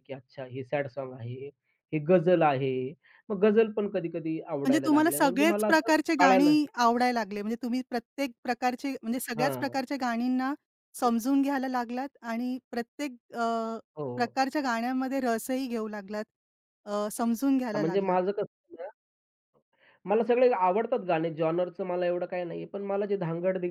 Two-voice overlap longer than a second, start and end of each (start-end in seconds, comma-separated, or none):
4.6-6.5